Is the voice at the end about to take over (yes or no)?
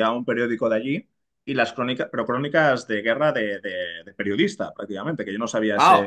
yes